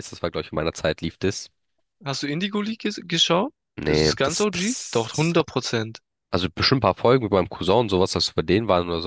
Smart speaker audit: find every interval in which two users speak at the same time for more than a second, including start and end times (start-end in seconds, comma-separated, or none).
3.8-5.3